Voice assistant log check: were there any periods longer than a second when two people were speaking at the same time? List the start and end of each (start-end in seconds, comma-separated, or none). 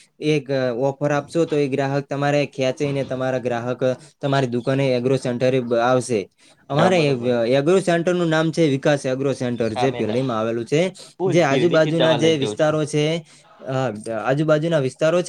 11.2-12.8